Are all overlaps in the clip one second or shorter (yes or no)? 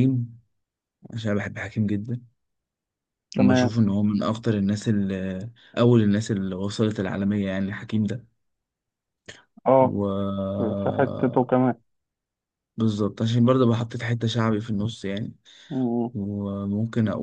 yes